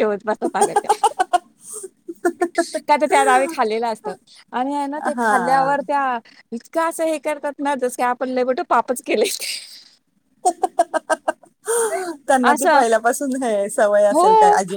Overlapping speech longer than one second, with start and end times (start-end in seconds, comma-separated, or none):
none